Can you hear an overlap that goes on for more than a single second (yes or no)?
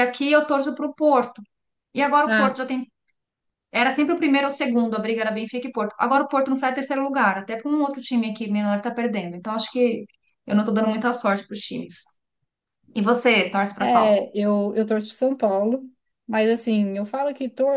no